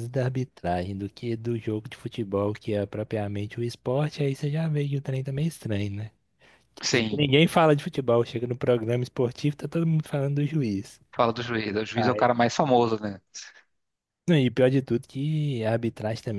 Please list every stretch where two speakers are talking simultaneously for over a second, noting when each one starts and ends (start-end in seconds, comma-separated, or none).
none